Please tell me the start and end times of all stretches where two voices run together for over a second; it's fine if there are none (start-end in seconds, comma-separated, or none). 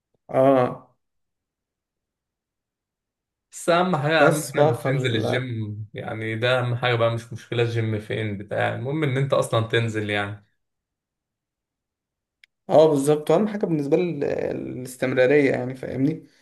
4.2-5.4